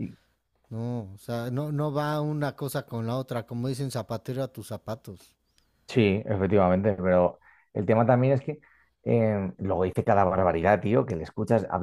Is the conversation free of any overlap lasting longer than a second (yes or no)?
yes